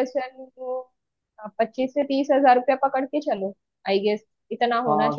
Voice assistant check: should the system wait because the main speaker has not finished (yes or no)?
no